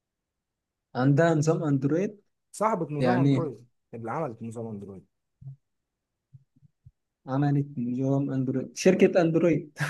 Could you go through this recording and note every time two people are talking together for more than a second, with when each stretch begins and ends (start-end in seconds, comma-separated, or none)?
none